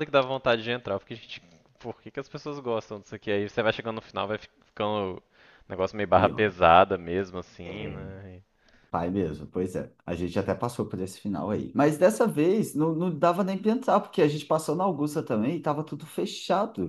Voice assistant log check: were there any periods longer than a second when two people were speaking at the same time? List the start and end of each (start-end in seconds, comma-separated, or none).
none